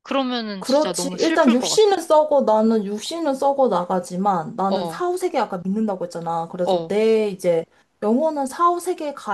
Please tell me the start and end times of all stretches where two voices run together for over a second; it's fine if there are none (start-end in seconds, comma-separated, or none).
0.6-1.9